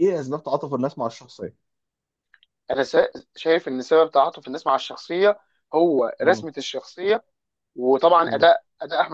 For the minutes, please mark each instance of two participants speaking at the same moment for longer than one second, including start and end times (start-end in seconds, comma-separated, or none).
none